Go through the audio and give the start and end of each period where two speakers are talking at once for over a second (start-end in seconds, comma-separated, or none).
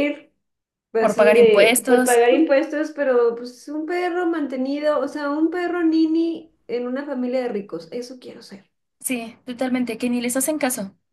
1.0-2.2